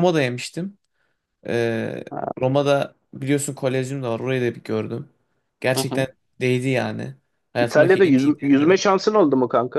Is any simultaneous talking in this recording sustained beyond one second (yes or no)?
yes